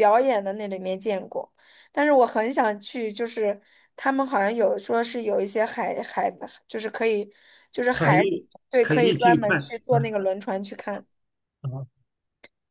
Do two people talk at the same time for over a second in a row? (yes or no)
yes